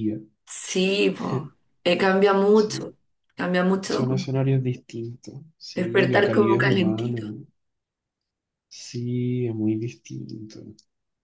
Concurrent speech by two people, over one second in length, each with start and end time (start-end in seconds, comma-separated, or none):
5.7-7.2